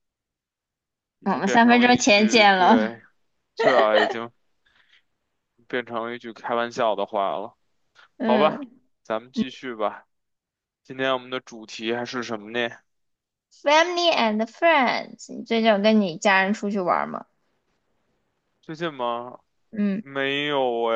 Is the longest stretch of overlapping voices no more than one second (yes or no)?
no